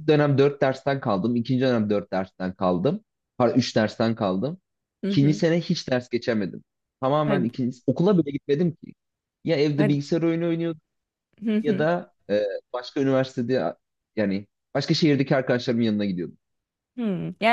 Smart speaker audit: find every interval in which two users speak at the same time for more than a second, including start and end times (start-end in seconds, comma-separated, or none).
none